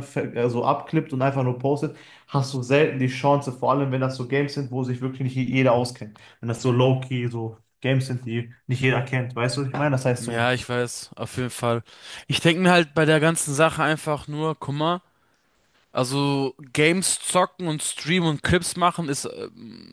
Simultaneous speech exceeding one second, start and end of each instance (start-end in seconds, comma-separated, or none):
none